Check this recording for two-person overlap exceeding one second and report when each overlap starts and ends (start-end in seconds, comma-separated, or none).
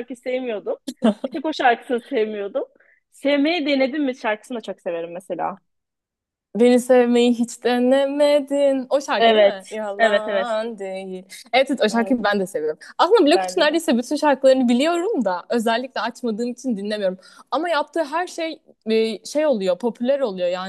9.2-10.5